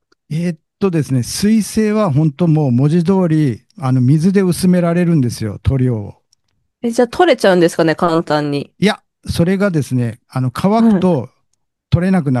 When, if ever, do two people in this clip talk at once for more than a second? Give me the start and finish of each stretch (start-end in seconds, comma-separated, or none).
none